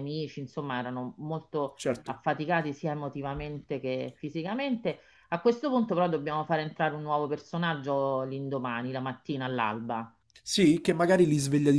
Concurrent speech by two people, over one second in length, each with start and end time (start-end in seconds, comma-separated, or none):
none